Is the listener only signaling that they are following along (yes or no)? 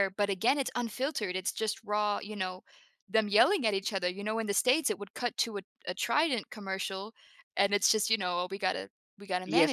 no